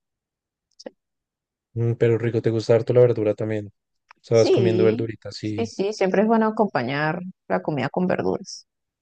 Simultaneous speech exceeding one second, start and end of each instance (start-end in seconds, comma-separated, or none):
4.3-5.7